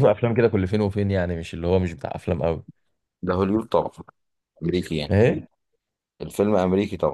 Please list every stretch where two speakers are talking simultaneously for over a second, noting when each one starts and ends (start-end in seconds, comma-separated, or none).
none